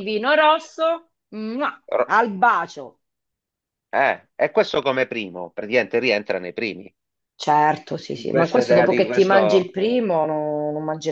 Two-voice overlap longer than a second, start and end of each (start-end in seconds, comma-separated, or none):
8.3-9.7